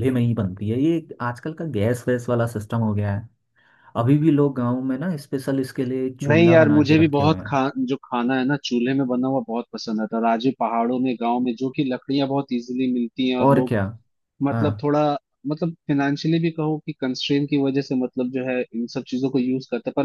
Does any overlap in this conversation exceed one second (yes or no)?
yes